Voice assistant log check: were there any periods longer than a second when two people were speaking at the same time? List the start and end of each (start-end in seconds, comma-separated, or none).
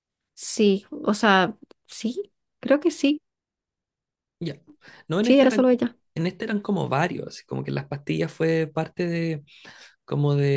none